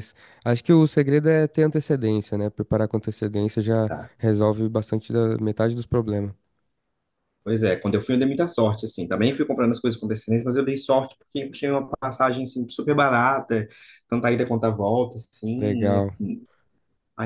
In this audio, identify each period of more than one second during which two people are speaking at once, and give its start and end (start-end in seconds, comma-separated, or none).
none